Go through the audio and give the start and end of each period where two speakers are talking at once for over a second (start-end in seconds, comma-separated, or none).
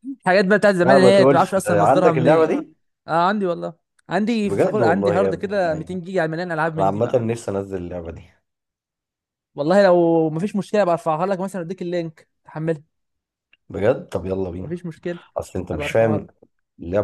0.8-2.6, 4.4-6.0